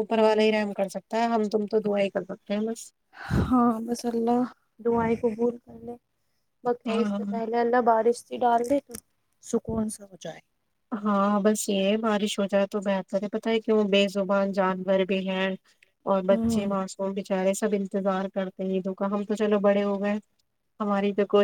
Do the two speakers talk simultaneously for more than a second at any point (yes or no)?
no